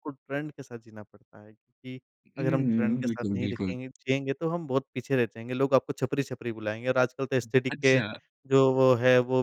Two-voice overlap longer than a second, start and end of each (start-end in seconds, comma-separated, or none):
2.4-3.7